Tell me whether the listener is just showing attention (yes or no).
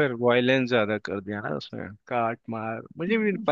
yes